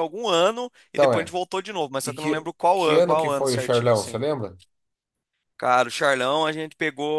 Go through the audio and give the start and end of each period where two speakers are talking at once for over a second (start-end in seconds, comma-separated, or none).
2.0-4.2